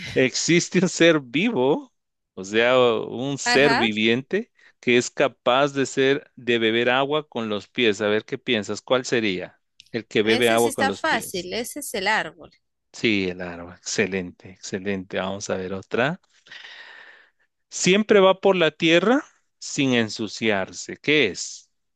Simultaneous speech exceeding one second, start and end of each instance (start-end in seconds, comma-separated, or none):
10.2-11.5